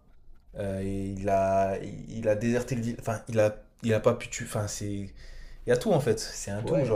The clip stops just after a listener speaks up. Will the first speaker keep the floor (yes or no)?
no